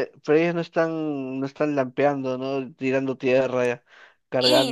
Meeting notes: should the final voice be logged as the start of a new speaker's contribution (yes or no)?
yes